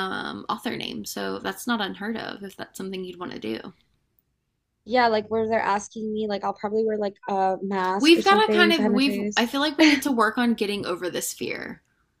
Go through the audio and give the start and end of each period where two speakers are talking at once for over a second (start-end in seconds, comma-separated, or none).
8.0-9.5